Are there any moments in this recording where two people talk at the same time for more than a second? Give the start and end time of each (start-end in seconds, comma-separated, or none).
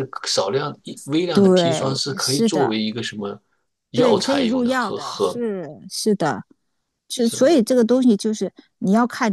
1.3-2.7, 3.9-5.4